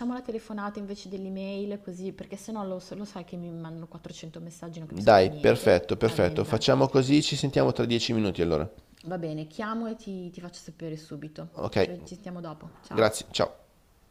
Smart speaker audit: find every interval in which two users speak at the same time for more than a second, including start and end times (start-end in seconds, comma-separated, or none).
4.9-6.6